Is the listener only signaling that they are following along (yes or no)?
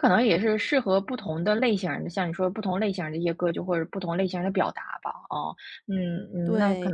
no